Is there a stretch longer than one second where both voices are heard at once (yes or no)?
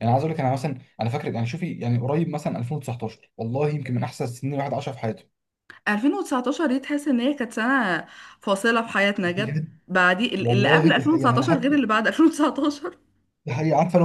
yes